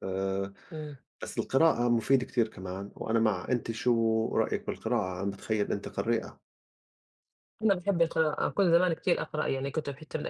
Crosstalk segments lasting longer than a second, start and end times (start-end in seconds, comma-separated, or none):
none